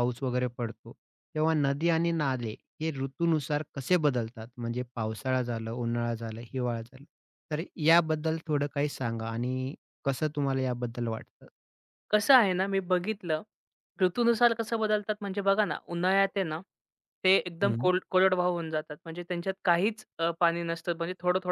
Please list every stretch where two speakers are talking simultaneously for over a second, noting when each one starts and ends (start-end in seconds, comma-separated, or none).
none